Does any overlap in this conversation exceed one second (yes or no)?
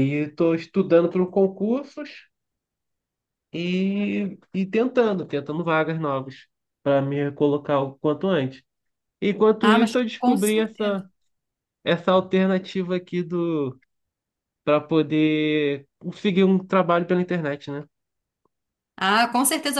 yes